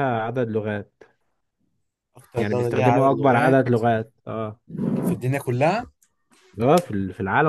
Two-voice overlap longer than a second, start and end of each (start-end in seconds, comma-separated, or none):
2.4-3.6